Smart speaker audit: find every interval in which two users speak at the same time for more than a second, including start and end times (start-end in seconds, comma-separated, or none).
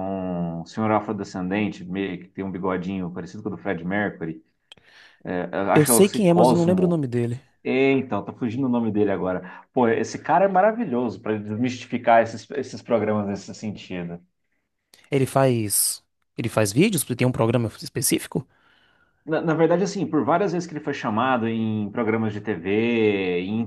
5.7-7.0